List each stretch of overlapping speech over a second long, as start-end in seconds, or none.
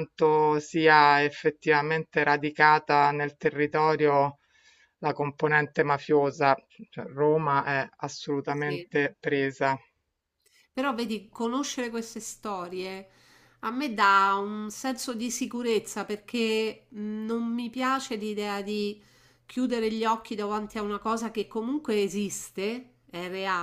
none